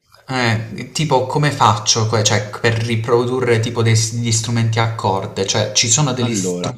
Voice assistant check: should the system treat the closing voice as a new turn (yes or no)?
yes